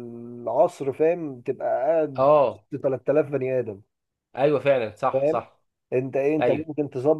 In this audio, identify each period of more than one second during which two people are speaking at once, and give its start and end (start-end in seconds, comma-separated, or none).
none